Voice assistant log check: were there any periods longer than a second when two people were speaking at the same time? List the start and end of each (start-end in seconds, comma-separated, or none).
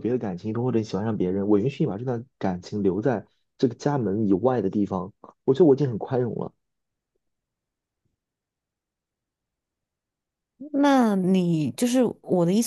none